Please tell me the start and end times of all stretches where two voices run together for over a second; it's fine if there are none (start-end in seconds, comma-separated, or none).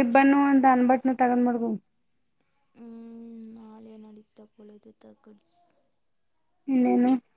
none